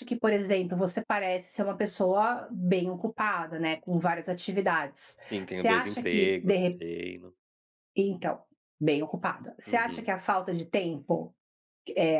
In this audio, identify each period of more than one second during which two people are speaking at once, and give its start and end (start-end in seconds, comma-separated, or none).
5.3-6.8